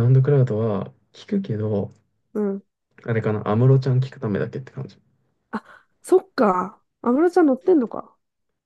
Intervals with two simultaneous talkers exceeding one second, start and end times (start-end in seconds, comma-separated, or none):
none